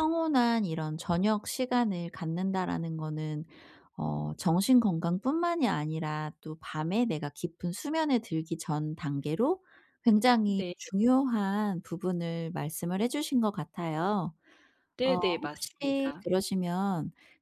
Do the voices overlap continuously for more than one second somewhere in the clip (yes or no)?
yes